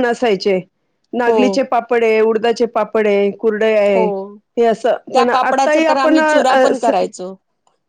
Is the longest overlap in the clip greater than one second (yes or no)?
yes